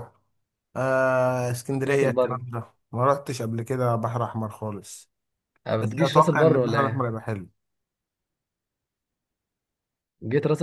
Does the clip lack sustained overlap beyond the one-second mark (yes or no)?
no